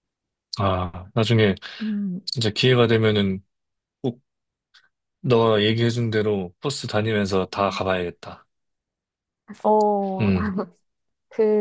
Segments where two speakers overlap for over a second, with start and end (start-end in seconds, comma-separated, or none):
none